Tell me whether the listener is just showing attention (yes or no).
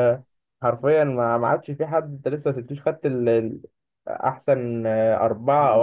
no